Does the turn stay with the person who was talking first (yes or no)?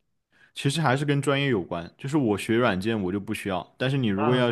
yes